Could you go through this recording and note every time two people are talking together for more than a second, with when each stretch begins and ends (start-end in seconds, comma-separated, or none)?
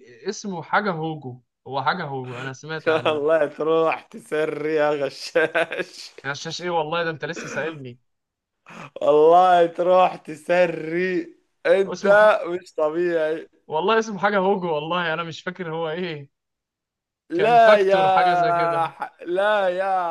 17.3-18.9